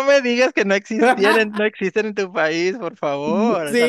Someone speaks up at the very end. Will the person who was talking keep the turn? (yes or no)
no